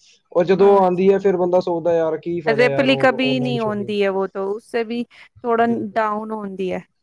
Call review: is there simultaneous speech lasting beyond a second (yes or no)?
yes